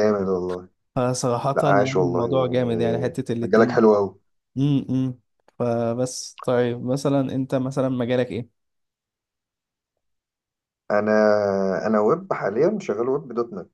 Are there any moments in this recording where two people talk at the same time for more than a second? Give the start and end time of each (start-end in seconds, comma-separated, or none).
1.5-4.0